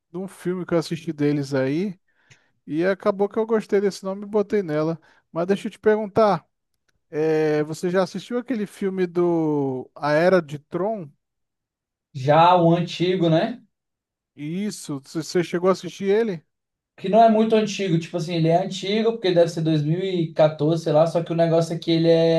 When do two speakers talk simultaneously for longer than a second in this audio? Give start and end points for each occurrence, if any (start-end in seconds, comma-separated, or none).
none